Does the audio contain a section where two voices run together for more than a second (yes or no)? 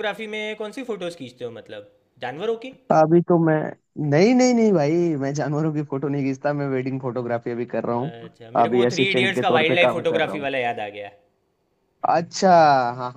yes